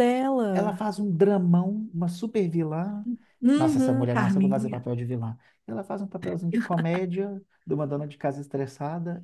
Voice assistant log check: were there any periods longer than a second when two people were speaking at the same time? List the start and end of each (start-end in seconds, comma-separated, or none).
3.5-4.8